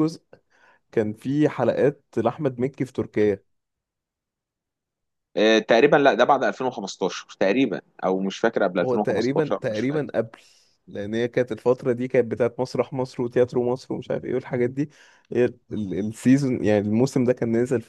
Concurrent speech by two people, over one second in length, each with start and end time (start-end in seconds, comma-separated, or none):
8.8-10.1